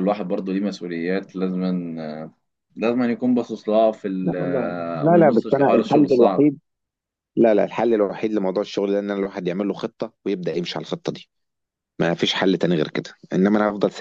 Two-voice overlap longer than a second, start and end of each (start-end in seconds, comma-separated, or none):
5.1-6.5